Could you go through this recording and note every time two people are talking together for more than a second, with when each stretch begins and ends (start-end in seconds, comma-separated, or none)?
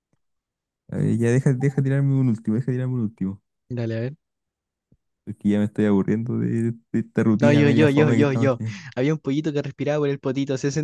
7.4-8.8